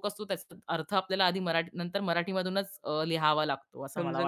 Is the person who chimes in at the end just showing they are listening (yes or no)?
no